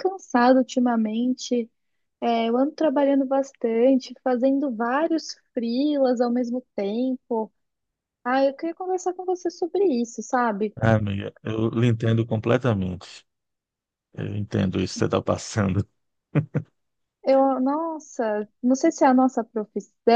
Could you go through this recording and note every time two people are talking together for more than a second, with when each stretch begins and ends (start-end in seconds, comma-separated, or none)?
none